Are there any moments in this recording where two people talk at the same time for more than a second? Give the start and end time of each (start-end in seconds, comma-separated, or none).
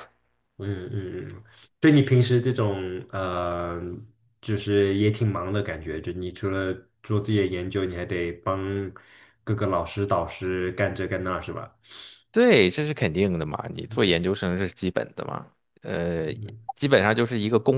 none